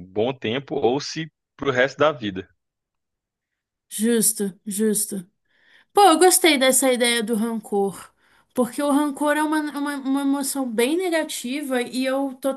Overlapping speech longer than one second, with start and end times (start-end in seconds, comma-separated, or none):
none